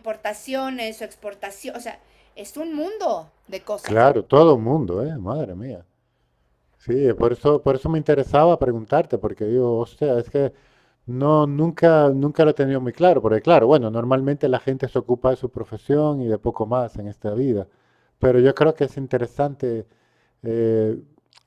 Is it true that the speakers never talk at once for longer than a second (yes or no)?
yes